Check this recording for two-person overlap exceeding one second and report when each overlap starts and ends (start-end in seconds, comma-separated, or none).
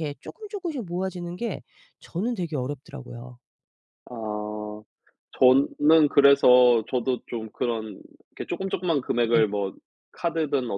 none